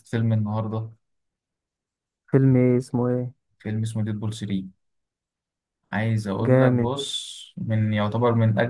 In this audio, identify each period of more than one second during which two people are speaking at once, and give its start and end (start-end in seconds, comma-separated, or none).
none